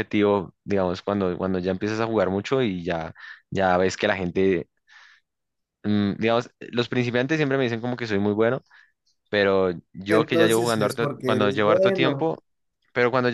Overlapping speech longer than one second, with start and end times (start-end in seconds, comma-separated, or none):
10.1-12.3